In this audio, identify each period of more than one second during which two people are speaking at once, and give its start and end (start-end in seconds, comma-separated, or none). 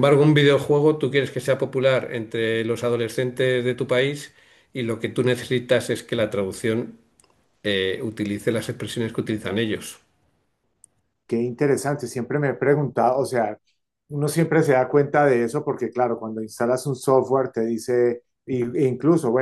none